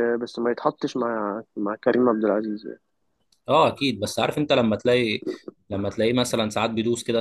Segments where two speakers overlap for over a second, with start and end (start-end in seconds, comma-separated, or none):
none